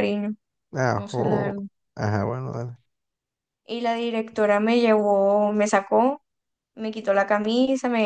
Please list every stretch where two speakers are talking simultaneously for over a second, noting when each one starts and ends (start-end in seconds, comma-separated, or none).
none